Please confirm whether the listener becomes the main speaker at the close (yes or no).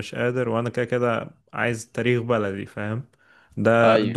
no